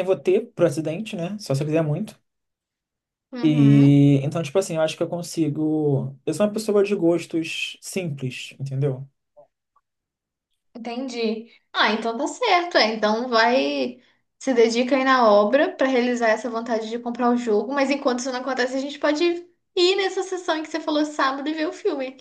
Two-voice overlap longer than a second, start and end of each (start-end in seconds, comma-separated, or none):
none